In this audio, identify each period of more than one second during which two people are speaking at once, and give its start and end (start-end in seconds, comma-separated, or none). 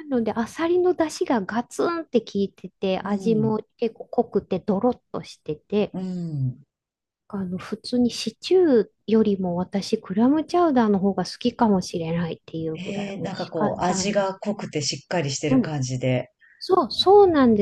12.8-14.4